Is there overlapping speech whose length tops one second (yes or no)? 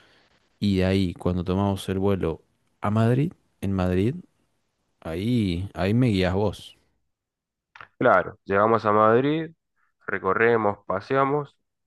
no